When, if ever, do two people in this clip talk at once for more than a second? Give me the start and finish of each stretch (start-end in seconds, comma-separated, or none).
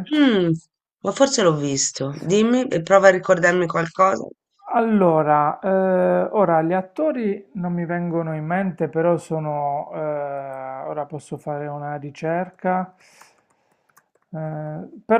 none